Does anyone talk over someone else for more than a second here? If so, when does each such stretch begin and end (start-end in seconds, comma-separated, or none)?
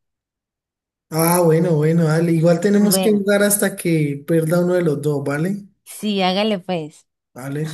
none